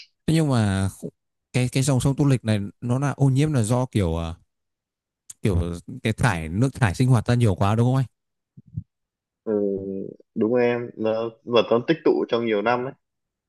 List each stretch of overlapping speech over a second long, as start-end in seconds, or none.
none